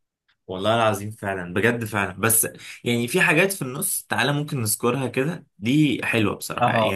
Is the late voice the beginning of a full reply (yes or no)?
no